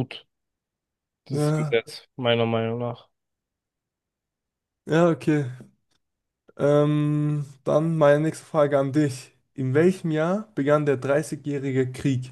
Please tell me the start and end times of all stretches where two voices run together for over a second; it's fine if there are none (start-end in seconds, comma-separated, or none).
none